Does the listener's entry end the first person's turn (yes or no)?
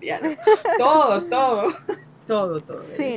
yes